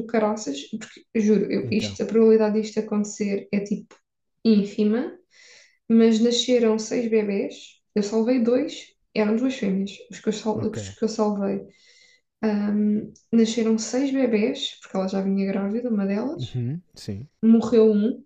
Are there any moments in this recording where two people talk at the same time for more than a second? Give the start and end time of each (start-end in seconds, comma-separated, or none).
none